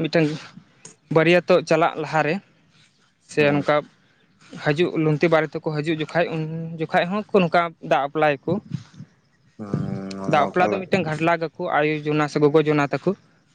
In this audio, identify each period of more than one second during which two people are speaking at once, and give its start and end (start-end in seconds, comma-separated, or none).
9.6-10.9